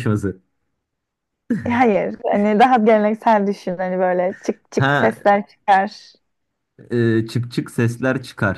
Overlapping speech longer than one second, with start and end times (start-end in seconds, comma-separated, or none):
none